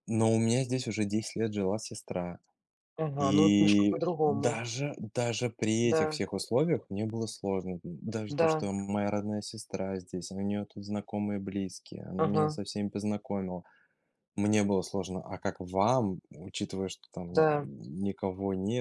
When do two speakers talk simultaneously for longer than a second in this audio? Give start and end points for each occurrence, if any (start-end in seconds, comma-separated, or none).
3.2-4.6